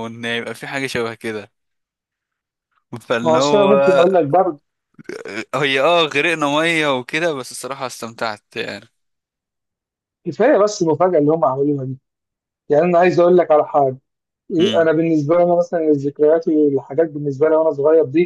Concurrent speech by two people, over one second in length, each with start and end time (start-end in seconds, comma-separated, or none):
none